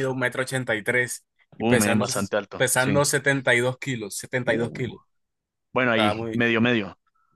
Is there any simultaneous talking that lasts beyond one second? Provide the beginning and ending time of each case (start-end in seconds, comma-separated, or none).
1.6-3.0